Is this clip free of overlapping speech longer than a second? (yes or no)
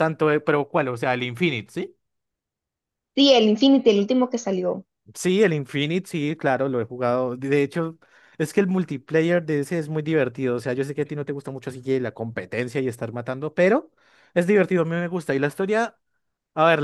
yes